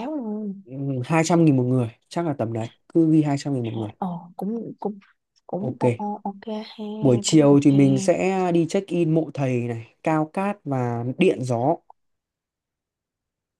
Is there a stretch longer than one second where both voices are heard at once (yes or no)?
no